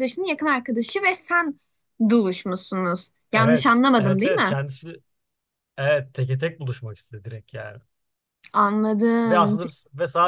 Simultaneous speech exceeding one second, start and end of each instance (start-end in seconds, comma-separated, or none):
3.3-4.6